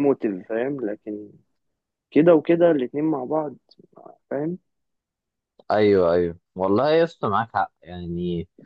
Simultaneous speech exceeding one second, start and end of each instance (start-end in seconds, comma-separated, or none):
none